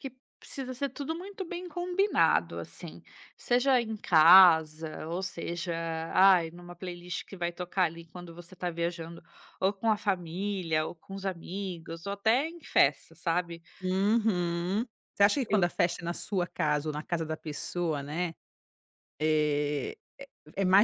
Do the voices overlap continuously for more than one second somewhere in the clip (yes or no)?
no